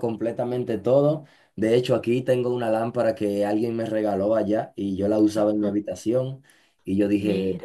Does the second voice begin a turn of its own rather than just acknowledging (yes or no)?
no